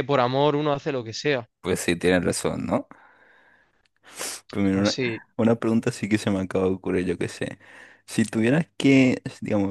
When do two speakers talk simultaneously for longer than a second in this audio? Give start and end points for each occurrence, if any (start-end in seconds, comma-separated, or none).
none